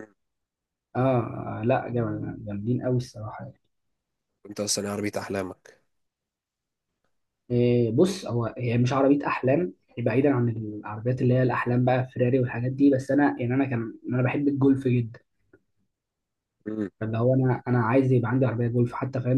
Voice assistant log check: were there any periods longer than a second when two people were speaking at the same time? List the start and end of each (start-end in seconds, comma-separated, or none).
none